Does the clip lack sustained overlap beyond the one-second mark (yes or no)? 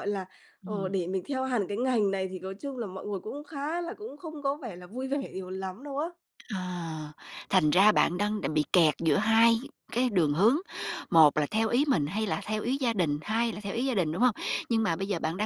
yes